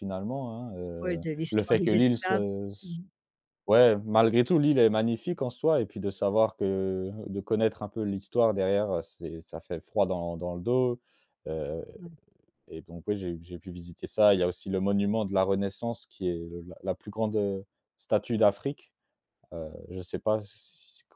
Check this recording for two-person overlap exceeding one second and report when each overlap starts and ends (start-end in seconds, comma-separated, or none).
1.0-2.4